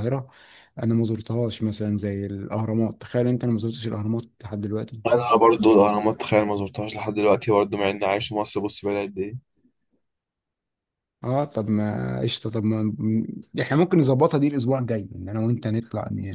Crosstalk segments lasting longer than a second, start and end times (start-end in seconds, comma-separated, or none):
none